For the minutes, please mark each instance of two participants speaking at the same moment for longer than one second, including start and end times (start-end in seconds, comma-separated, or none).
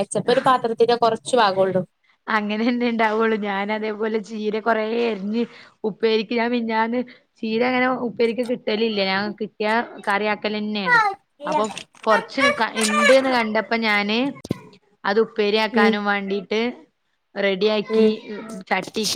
none